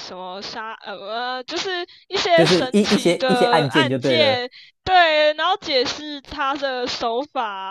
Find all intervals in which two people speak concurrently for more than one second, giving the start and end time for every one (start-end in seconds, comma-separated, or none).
2.3-4.4